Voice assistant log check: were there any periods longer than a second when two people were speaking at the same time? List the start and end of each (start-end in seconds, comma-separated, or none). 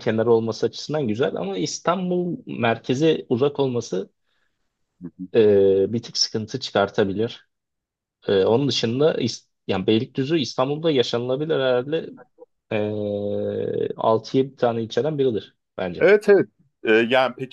none